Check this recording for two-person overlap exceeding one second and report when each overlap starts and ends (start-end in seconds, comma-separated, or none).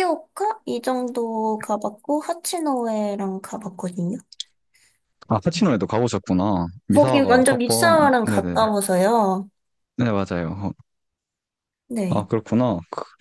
6.9-8.6